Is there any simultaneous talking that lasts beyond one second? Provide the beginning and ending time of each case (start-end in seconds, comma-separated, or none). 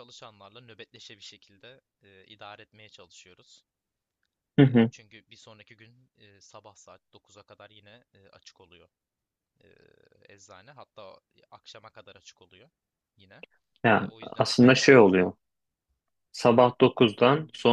13.9-15.3